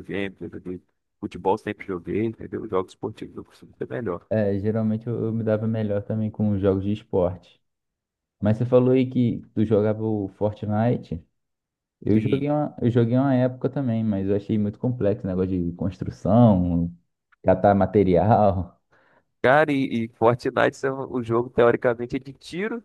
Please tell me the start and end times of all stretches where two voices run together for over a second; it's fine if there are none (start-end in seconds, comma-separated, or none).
none